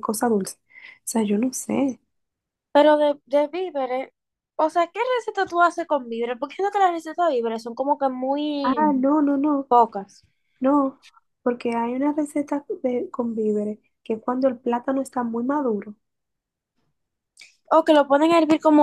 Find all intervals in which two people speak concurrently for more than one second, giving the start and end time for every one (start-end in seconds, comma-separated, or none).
none